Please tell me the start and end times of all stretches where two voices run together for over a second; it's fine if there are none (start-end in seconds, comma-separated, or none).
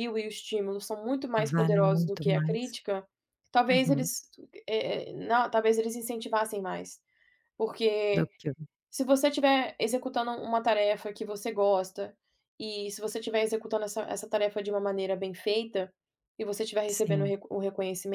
1.4-2.8